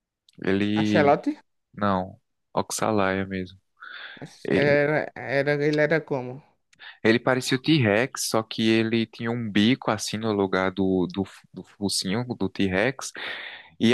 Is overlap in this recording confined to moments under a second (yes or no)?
yes